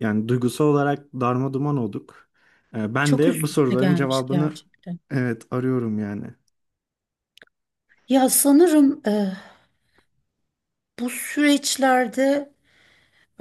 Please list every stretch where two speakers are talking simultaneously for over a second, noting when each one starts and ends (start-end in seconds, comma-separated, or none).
3.0-4.5